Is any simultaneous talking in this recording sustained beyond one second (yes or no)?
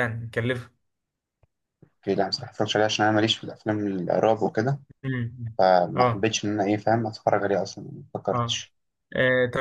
no